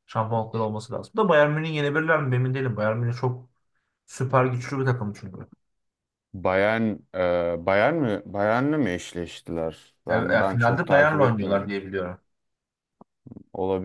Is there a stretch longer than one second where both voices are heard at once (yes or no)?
yes